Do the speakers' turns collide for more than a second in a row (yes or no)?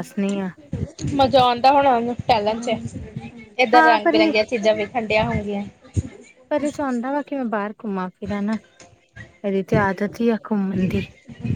no